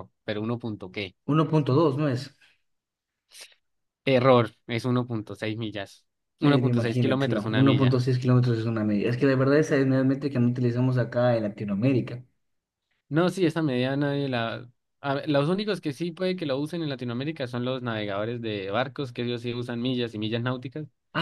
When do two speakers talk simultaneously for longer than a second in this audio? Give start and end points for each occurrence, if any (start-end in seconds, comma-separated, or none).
6.4-8.0